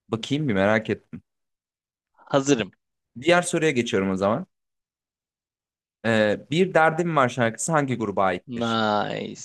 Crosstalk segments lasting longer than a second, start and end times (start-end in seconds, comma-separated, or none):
none